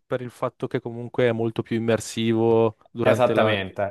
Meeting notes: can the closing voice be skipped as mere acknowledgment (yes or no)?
no